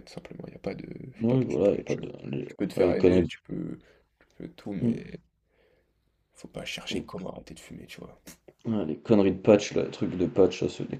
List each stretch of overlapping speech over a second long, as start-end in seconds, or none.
1.2-3.3